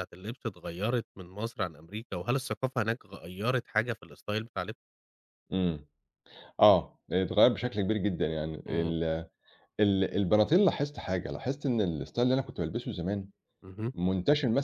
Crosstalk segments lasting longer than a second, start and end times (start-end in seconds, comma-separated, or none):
none